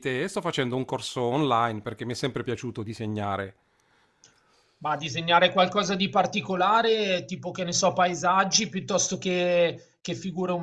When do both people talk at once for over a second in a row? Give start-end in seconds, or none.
none